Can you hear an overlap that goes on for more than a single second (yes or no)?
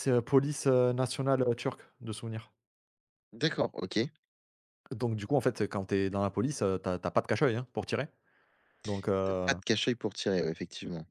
no